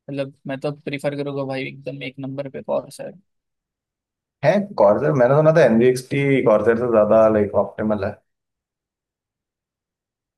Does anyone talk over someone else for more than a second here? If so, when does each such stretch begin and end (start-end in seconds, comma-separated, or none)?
none